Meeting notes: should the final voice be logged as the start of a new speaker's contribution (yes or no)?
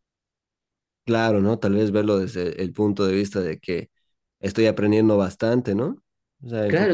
yes